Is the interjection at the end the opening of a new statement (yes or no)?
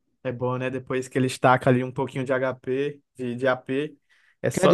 yes